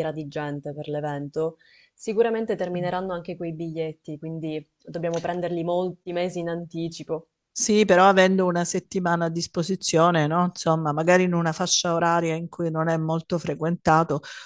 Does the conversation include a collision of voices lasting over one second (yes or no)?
no